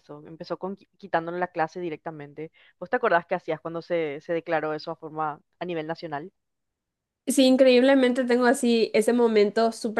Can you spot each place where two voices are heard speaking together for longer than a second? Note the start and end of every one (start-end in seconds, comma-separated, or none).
none